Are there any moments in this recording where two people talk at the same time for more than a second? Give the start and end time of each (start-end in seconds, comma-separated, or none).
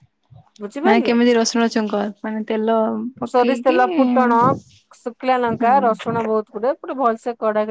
none